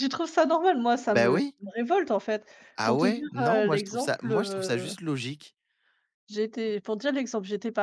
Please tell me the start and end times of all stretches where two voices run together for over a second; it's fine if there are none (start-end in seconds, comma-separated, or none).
2.8-4.9